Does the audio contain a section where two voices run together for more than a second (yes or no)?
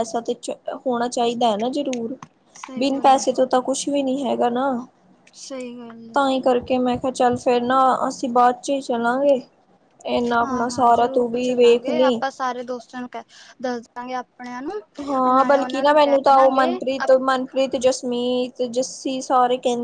yes